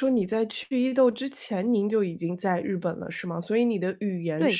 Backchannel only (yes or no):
yes